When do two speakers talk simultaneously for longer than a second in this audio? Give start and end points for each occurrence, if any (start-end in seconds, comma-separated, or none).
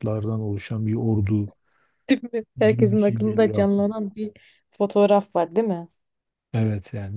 2.7-3.9